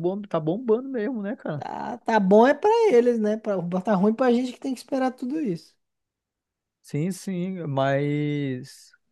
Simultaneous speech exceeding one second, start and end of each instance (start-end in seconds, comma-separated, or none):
none